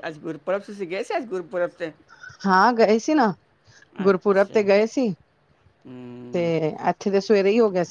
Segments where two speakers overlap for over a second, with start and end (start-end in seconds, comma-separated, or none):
none